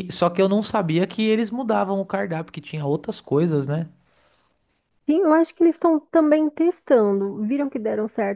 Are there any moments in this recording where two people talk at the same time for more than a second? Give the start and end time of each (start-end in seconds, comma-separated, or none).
none